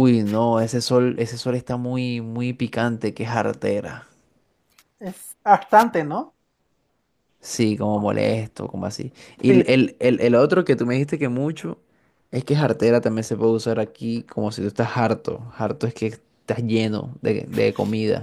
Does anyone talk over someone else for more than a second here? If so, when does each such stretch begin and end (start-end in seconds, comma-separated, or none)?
none